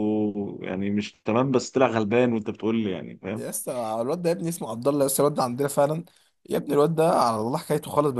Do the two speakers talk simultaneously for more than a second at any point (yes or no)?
no